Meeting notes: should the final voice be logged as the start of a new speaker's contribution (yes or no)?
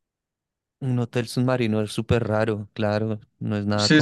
yes